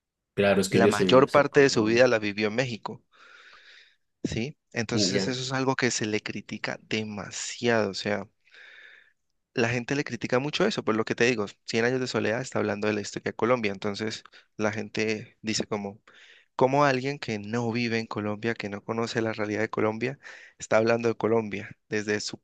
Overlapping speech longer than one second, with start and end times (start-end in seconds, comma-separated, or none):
0.7-2.1